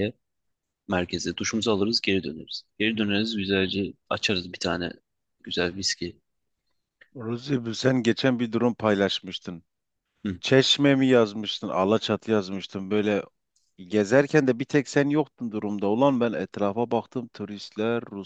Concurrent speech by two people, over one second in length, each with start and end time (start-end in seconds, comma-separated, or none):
none